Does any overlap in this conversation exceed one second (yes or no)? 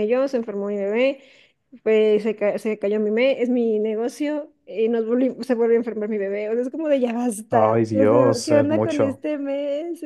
yes